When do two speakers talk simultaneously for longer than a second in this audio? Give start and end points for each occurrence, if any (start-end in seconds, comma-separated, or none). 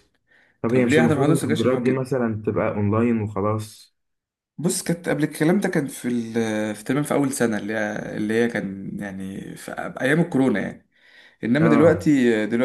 0.7-2.1